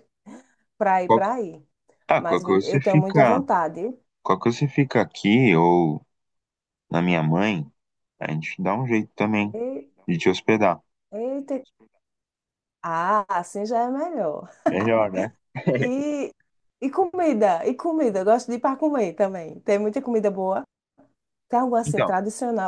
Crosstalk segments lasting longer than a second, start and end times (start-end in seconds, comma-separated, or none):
2.2-3.4